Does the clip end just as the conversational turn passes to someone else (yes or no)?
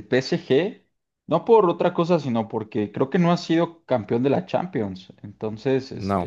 no